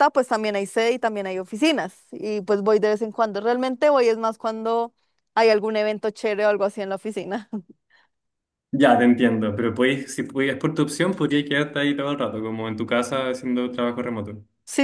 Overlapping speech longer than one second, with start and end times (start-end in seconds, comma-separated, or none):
none